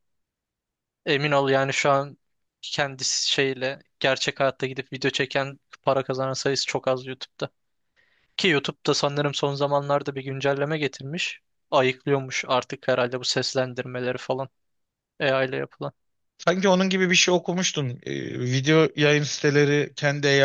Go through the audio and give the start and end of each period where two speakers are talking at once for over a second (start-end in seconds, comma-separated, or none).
none